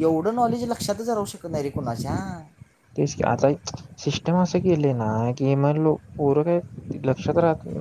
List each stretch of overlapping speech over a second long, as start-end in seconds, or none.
none